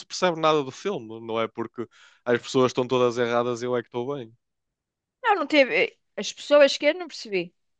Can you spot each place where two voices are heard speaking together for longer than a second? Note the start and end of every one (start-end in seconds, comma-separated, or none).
none